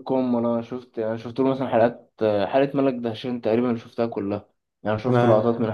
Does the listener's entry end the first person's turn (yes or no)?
no